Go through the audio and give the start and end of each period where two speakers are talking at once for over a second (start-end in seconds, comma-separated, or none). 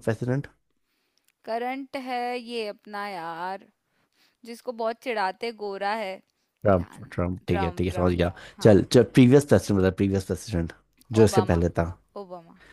6.7-8.8